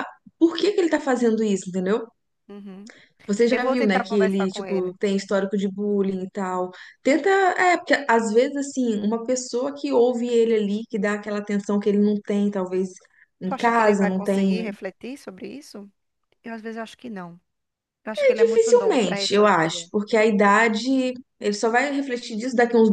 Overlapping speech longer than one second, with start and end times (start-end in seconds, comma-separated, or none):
3.5-5.0, 13.4-14.8, 18.1-19.9